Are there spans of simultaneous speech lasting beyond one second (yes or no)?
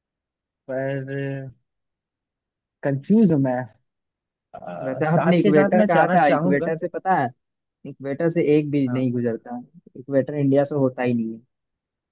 yes